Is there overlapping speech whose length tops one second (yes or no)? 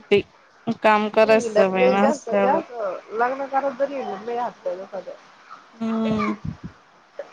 yes